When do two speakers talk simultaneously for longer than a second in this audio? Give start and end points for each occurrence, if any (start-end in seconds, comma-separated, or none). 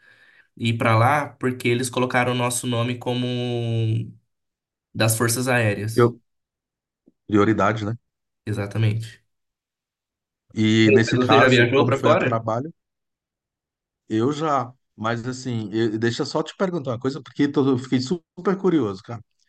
10.9-12.4